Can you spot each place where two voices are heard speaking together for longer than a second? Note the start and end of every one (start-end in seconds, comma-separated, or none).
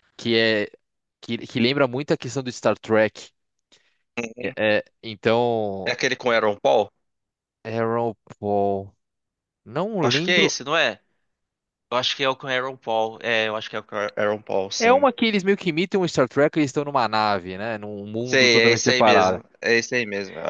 18.2-19.4